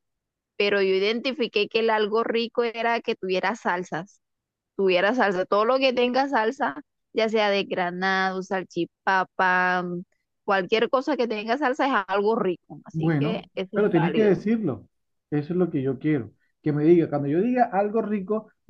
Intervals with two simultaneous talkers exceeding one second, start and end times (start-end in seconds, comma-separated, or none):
12.9-14.4